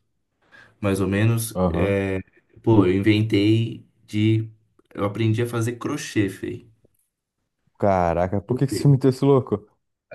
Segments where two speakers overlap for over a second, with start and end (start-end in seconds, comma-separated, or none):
none